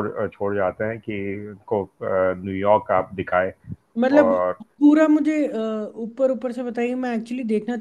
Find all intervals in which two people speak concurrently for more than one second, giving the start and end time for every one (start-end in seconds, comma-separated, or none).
none